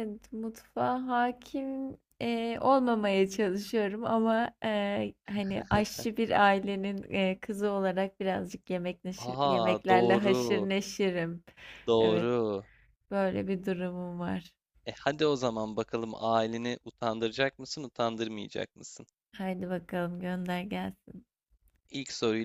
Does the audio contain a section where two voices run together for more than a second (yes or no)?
yes